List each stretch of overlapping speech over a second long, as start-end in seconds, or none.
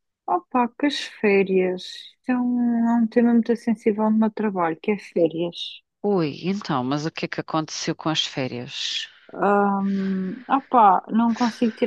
none